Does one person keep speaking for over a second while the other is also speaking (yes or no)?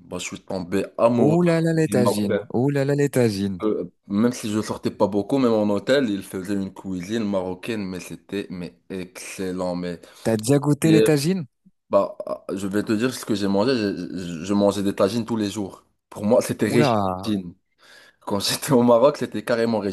yes